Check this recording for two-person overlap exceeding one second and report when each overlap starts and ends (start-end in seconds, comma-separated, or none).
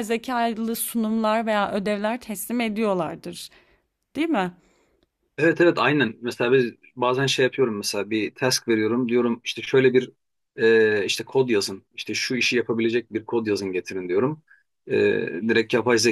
none